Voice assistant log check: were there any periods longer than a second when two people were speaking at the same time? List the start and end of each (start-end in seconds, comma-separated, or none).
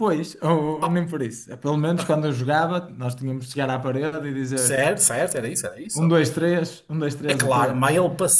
none